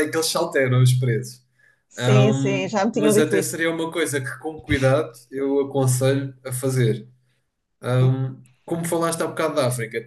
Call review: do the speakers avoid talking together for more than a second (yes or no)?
no